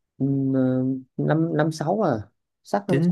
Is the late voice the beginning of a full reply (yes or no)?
yes